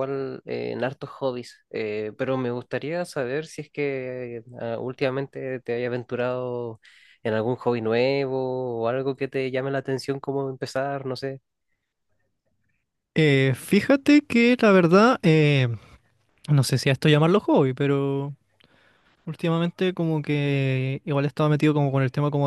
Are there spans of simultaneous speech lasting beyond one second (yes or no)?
no